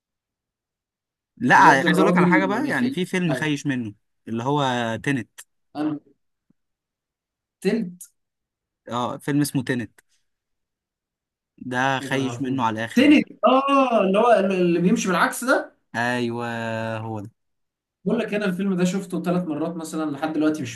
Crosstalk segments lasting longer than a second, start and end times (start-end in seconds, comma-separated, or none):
1.5-3.5, 12.0-13.2